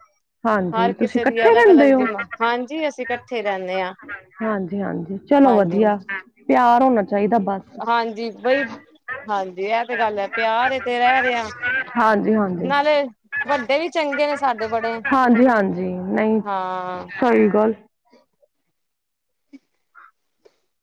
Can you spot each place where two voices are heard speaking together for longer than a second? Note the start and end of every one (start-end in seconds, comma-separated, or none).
0.8-2.0